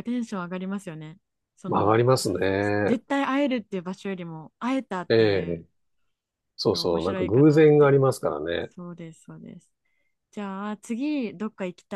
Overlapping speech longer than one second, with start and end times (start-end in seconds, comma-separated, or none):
6.7-8.0